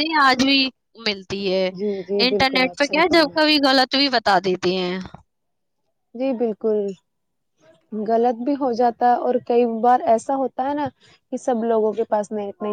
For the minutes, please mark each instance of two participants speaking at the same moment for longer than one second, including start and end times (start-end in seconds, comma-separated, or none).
2.3-3.6